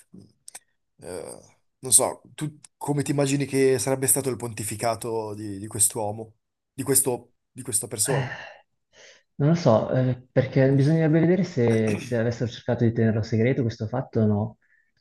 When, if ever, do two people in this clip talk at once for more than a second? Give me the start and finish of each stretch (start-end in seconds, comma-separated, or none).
none